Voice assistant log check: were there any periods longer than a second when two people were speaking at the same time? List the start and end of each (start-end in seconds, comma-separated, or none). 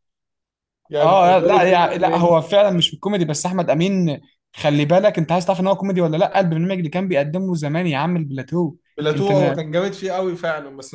1.0-2.3